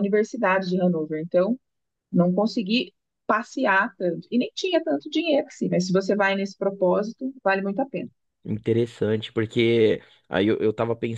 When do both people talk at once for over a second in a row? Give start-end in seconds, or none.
none